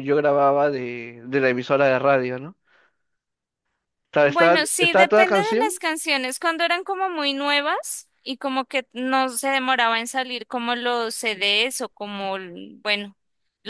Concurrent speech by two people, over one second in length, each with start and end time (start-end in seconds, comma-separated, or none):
4.2-5.7